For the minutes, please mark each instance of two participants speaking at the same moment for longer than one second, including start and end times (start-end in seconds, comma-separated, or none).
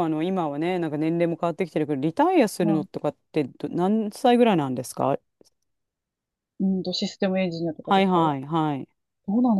none